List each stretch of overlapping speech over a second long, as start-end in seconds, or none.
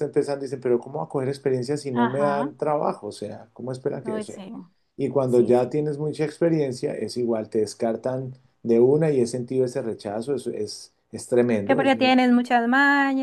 none